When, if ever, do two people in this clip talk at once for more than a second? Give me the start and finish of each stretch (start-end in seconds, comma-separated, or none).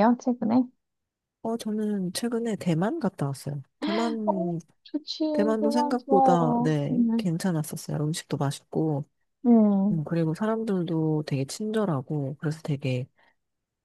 5.6-7.3